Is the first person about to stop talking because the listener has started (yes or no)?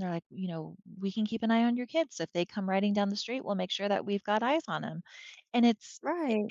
no